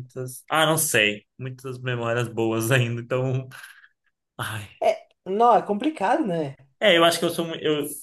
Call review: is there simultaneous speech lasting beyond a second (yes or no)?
no